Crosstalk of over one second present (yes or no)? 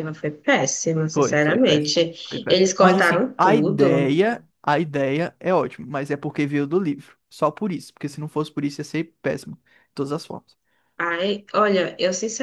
yes